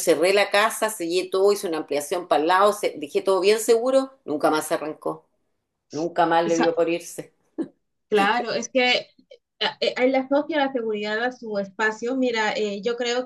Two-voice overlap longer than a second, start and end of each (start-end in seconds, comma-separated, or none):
none